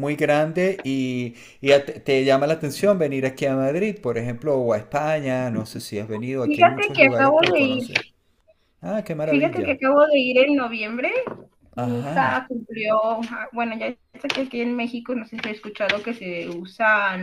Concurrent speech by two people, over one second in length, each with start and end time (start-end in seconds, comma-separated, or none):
6.4-7.8